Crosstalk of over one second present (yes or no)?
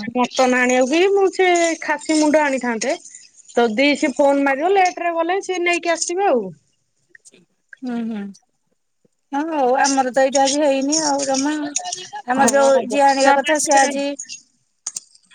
yes